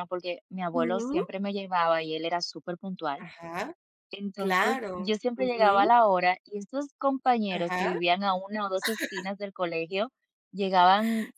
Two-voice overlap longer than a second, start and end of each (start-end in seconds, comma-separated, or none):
4.4-5.9